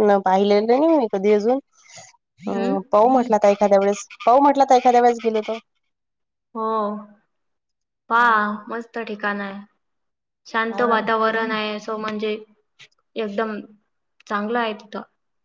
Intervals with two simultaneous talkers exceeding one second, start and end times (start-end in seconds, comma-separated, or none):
none